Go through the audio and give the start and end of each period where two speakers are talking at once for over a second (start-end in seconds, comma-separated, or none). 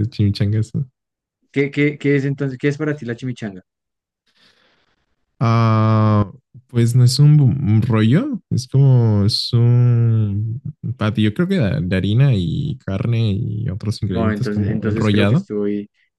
14.1-15.5